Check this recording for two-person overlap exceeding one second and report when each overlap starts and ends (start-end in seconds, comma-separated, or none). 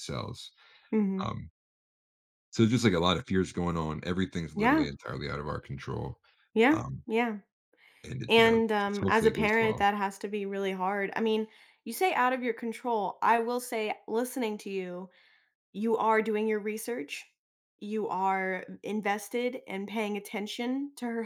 8.3-9.8